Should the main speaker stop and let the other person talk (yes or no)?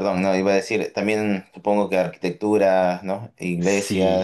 yes